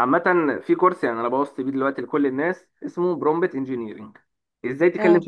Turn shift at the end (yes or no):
no